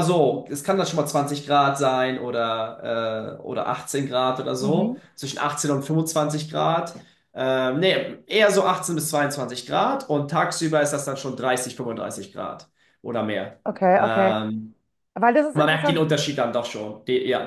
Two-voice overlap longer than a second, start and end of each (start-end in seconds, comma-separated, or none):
none